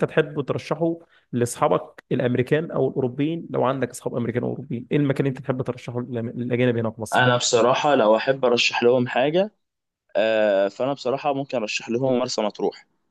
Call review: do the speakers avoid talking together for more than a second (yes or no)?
yes